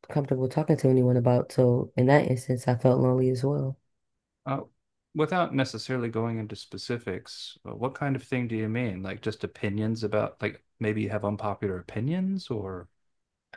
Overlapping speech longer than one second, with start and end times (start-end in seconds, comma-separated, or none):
none